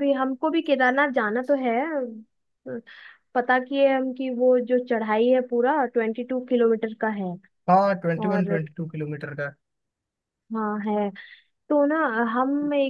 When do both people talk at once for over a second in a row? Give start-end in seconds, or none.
none